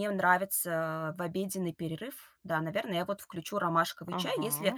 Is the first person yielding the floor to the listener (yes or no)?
no